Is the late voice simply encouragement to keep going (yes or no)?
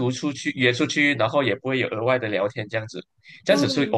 yes